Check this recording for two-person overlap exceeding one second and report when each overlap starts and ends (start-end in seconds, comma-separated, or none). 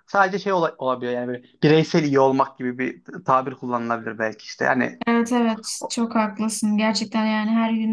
none